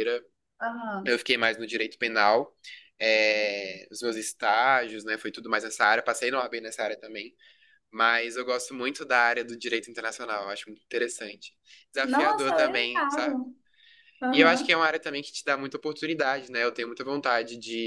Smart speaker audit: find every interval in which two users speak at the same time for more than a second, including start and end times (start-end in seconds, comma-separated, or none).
12.0-13.4